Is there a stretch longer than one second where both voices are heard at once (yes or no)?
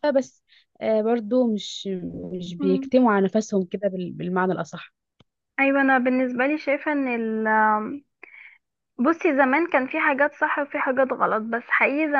no